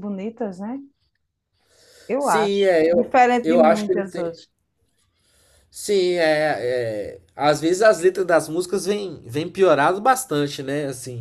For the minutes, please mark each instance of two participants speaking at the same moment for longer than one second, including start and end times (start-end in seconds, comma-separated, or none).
2.2-4.4